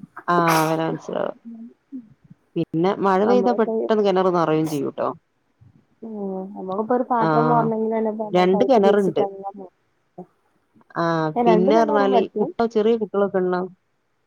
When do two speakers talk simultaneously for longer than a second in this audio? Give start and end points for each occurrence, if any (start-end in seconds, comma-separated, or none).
none